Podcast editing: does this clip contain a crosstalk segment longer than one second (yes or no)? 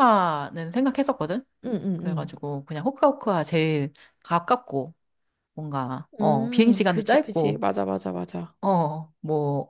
yes